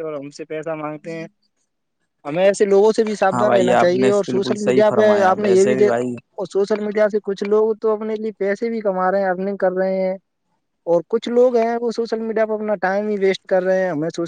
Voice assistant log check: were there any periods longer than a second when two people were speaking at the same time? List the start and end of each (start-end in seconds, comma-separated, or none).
3.3-6.2